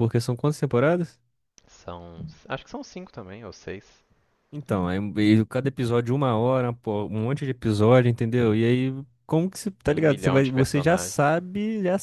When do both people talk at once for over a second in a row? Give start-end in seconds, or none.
9.9-11.2